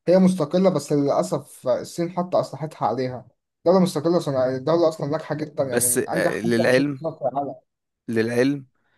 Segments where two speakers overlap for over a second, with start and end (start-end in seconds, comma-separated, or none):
5.6-7.0